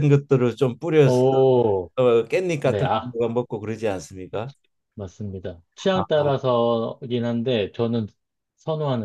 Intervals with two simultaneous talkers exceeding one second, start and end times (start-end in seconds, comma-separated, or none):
none